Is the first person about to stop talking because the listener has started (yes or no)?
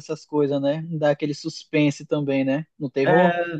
yes